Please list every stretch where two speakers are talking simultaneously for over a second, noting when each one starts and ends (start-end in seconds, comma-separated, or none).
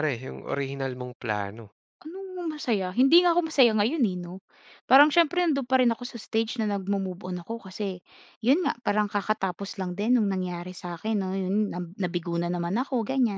none